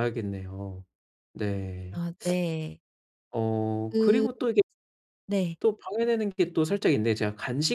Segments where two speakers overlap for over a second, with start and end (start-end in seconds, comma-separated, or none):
none